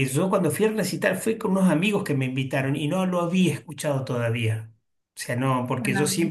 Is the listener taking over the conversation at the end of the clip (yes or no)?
no